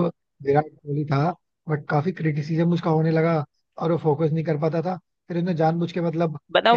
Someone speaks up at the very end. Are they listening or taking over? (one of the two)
taking over